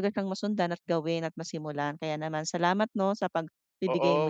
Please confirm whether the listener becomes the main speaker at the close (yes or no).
yes